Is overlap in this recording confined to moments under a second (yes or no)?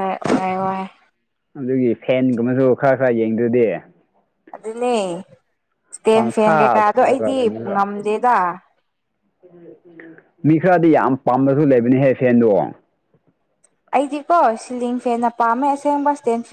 no